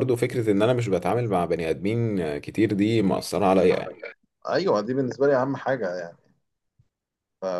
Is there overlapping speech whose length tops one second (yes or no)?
no